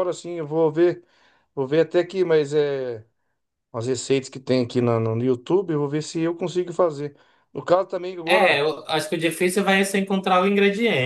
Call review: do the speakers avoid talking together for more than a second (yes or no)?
yes